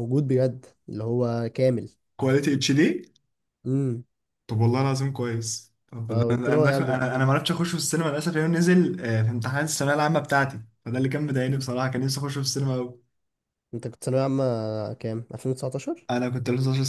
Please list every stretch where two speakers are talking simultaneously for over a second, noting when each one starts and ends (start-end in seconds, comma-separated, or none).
6.1-7.3